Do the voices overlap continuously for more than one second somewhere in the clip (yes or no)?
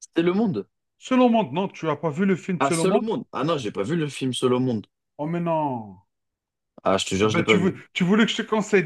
no